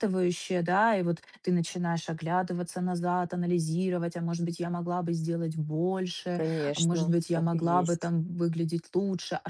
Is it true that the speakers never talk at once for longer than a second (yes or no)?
no